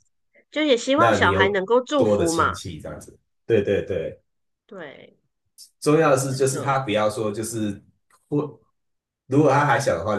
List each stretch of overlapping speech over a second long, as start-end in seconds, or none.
0.9-2.6